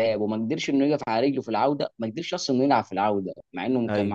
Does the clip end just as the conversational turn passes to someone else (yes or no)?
no